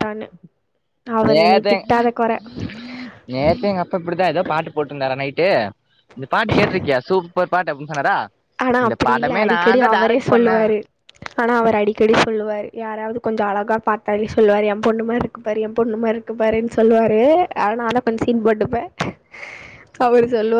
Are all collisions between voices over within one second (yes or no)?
no